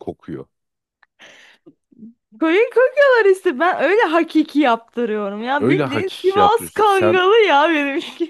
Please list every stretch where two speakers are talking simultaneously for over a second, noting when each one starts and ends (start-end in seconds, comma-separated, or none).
5.6-7.2